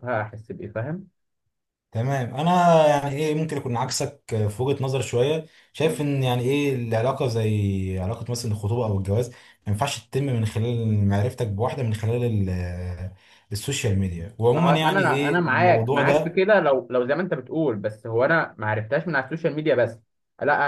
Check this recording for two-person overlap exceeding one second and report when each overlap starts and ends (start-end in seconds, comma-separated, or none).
14.5-16.4